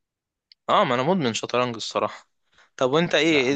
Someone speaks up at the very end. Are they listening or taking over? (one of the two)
listening